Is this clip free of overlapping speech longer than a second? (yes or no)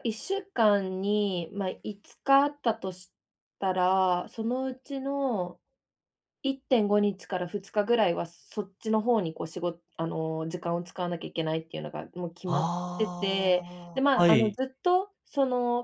no